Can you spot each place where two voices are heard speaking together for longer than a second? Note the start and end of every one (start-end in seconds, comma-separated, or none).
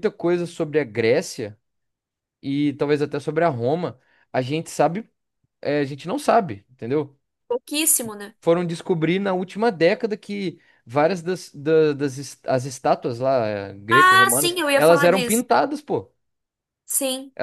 13.9-15.4